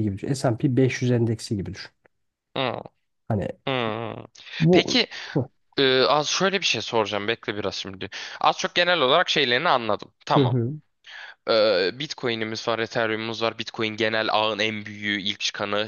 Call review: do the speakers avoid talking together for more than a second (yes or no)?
yes